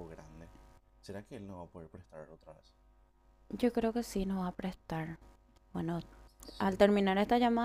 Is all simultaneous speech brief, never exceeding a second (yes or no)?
yes